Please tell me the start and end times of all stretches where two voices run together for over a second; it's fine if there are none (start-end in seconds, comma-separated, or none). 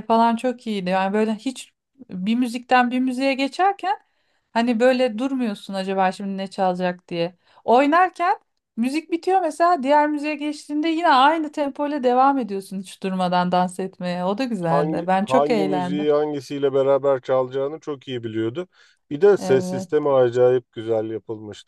14.7-16.1